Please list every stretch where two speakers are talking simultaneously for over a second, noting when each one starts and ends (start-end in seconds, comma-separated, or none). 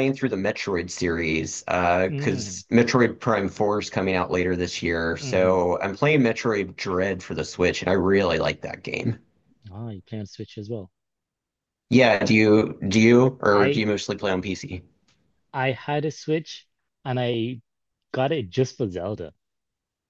none